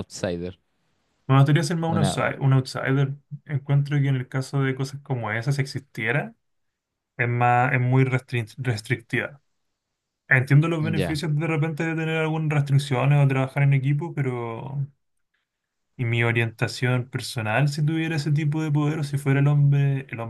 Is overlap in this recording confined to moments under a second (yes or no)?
yes